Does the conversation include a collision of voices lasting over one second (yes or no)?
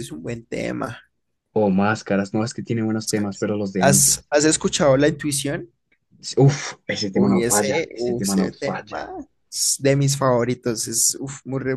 yes